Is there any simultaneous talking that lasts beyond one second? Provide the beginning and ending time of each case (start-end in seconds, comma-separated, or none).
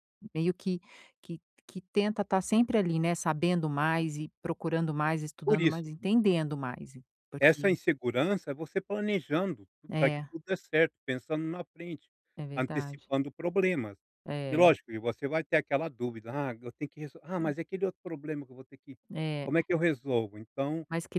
none